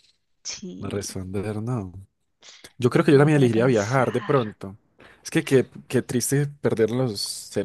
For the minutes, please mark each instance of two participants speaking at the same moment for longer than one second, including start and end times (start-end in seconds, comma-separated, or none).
3.1-4.4